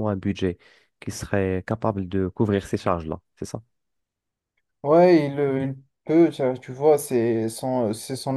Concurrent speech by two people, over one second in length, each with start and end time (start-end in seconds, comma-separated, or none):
none